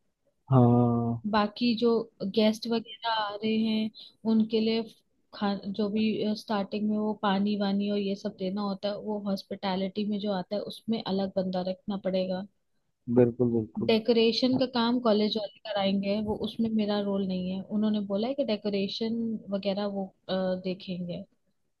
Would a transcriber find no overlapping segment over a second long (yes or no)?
yes